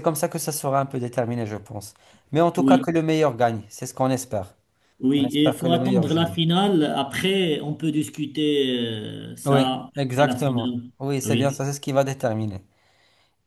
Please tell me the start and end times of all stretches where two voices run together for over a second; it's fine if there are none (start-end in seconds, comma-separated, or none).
5.2-6.4, 9.4-11.6